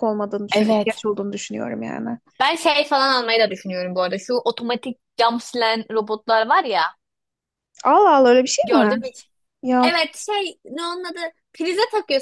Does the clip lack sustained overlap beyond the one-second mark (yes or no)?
yes